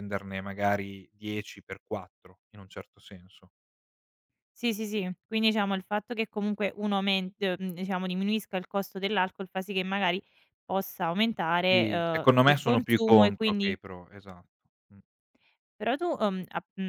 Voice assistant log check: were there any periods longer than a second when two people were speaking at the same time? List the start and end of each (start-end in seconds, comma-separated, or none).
11.7-13.8